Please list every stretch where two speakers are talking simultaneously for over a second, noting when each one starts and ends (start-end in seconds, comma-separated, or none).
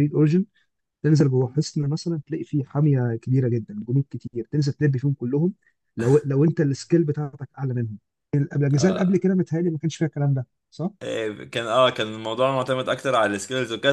none